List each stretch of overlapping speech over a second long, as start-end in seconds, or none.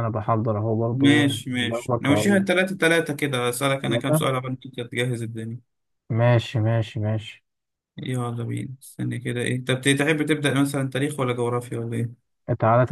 0.9-2.4